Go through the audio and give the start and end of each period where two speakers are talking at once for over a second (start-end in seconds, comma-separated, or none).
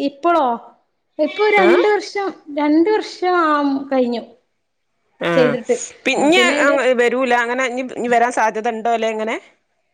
none